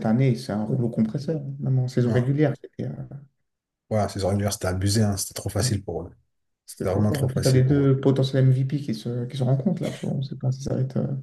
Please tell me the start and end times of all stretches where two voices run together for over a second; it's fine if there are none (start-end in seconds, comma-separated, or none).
6.7-7.9